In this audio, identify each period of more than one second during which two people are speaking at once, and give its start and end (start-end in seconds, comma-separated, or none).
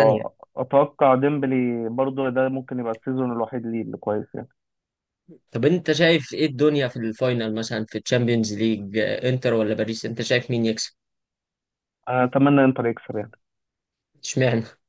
none